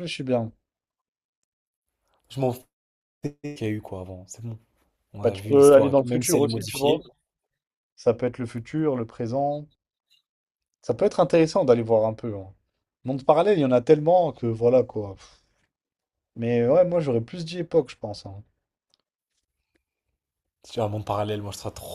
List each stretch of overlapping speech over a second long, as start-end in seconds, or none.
5.2-7.0